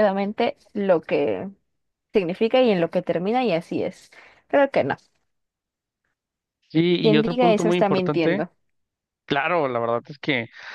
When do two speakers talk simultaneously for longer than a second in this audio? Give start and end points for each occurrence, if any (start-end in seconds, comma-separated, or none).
7.0-8.4